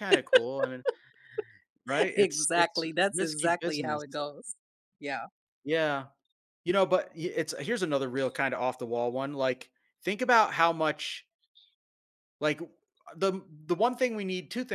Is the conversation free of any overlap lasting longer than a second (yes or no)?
no